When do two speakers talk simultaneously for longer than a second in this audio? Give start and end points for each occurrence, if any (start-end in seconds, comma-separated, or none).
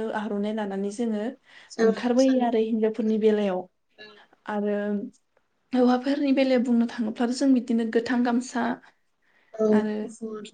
1.9-3.4